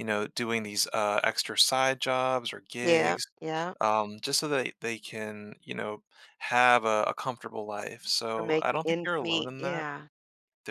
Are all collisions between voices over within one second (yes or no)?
no